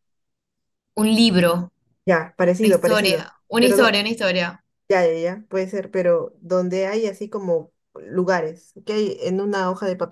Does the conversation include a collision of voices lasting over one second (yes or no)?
yes